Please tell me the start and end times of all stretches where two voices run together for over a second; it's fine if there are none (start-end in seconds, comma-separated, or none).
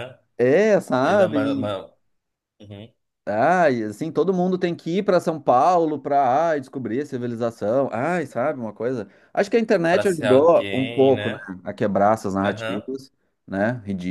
9.9-11.5